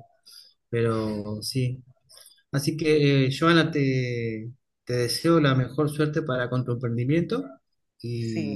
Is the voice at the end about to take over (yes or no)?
yes